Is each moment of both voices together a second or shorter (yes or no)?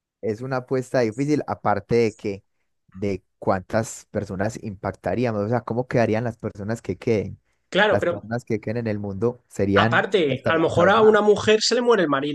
no